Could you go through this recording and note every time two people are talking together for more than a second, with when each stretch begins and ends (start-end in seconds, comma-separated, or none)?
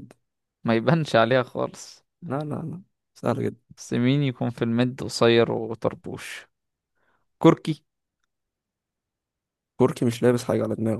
none